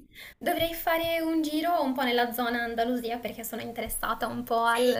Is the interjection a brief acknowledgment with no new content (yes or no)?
yes